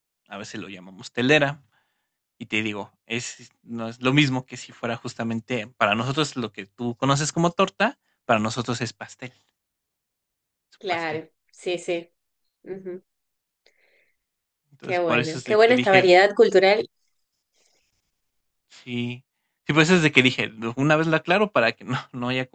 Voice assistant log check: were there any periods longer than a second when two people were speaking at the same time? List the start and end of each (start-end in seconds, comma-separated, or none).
14.8-16.1